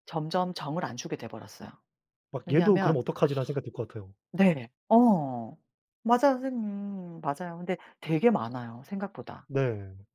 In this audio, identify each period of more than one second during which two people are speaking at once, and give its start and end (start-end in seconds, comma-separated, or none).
none